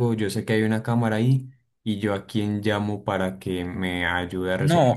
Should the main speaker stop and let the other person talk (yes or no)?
yes